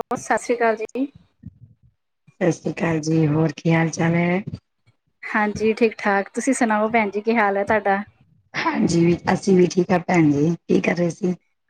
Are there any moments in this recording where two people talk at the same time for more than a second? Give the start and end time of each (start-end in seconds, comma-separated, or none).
none